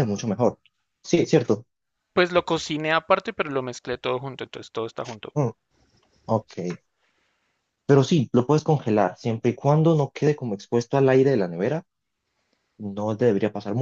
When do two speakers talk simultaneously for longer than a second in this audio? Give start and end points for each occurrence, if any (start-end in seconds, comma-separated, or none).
none